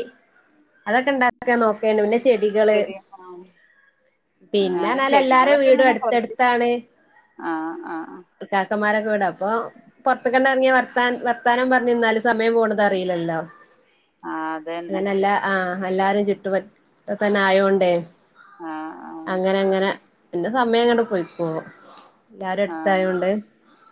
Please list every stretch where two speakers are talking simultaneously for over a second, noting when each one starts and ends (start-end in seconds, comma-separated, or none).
4.7-6.3